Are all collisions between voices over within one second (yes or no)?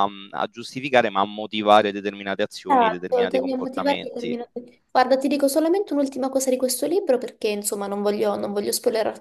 no